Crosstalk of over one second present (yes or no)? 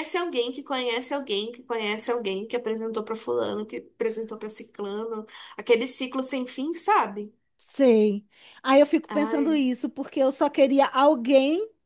no